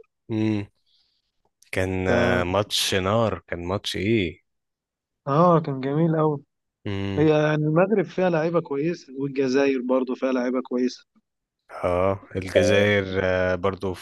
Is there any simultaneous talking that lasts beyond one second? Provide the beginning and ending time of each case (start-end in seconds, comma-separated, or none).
none